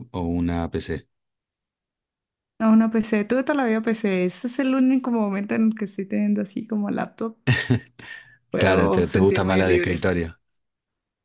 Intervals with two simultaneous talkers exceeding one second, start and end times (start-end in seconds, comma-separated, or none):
8.6-10.0